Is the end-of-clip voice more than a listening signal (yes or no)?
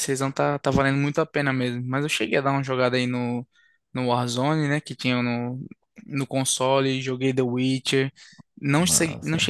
no